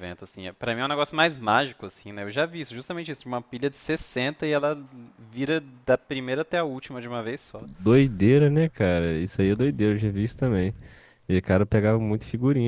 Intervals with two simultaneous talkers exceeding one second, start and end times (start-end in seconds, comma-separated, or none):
none